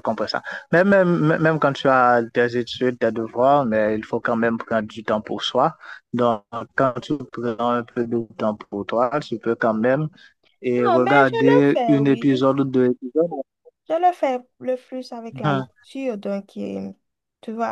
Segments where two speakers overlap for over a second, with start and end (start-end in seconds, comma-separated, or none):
10.8-12.3